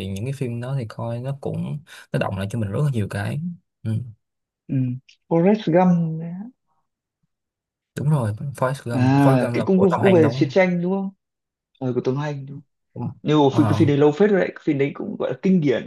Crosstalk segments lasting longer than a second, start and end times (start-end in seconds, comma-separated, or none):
8.9-10.5